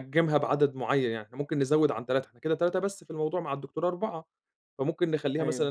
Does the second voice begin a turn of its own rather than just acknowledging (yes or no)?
no